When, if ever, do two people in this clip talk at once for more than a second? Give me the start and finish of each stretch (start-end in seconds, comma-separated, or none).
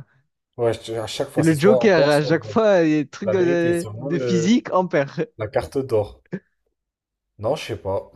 1.4-2.6, 3.2-4.6